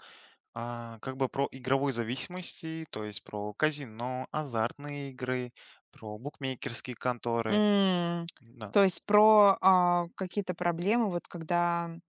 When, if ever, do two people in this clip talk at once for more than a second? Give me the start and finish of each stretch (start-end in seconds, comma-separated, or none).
none